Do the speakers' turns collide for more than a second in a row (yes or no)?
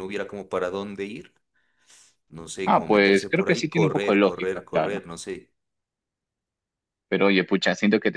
yes